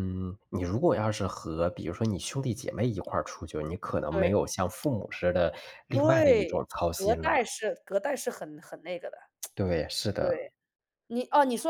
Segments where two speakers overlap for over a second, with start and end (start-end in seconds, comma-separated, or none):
5.9-7.5